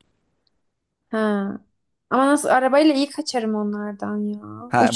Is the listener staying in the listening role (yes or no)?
no